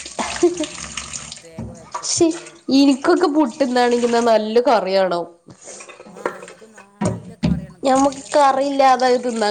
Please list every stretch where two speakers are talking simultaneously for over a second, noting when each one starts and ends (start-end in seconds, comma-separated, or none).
none